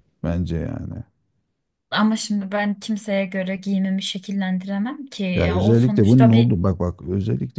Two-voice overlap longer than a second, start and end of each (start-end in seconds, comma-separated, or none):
5.3-6.5